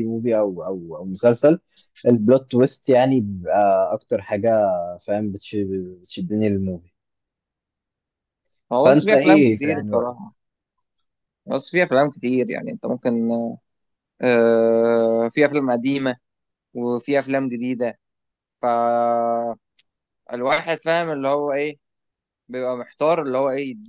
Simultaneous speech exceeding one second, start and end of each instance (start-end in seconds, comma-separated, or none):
8.8-10.2